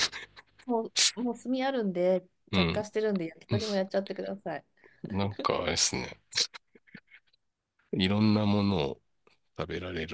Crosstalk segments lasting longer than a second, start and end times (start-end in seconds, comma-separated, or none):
none